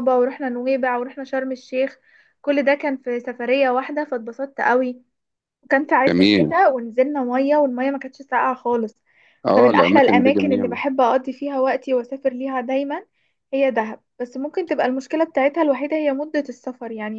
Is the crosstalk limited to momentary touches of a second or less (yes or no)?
no